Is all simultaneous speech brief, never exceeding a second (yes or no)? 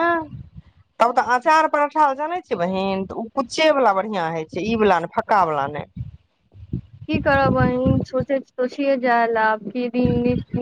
yes